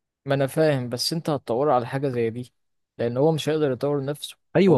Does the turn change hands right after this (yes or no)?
yes